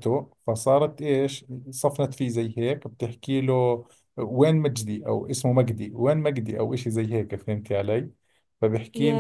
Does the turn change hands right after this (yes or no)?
no